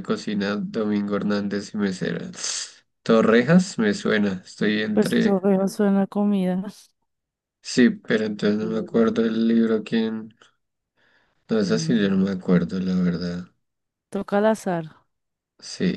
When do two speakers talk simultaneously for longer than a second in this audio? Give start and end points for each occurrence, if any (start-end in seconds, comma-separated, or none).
none